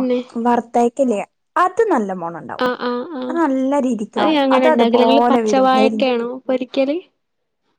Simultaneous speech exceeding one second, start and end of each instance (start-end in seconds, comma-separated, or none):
4.3-6.1